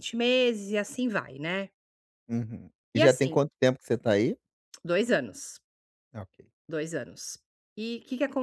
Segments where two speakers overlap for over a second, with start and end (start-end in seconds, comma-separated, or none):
none